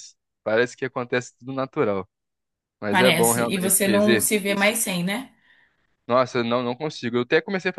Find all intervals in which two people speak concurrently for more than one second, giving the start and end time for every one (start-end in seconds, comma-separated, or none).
2.9-4.7